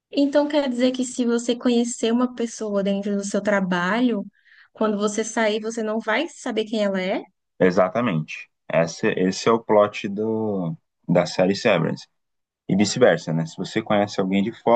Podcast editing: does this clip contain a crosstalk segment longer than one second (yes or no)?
no